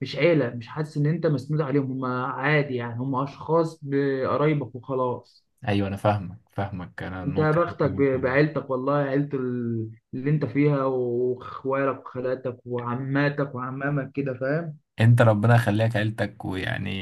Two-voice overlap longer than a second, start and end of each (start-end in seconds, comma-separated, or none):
7.2-8.5